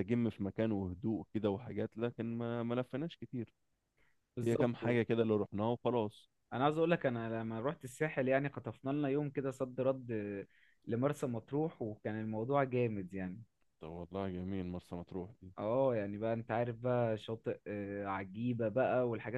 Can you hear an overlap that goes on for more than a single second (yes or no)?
no